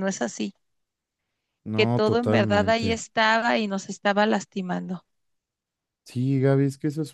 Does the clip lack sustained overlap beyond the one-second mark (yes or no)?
no